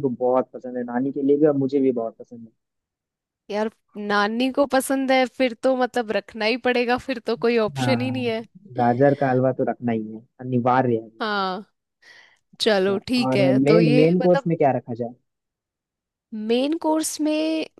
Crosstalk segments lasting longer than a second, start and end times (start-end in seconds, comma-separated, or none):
12.6-14.5